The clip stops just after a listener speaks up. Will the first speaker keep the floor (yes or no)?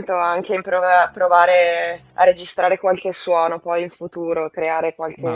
no